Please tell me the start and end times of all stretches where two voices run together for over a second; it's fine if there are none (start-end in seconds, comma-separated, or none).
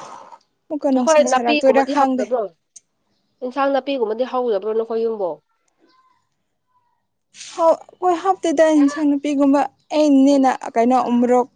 1.0-2.2